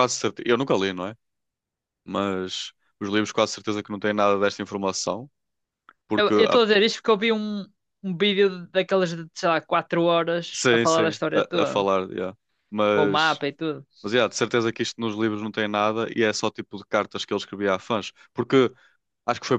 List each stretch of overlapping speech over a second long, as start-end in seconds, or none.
10.5-11.9